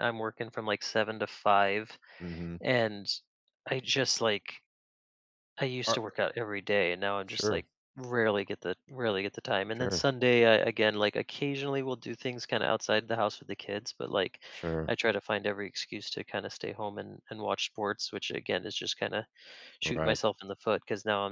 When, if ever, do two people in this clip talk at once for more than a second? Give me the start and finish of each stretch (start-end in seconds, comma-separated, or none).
none